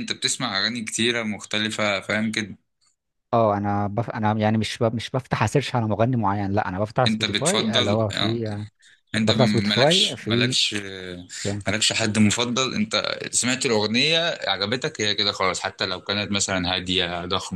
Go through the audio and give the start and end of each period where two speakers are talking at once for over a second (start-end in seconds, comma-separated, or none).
7.1-8.4, 9.2-10.6